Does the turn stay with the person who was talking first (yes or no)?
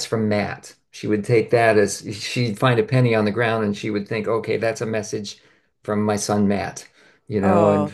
no